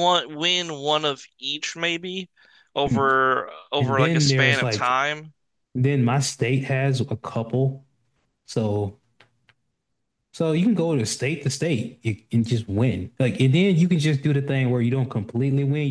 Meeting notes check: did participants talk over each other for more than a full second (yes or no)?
yes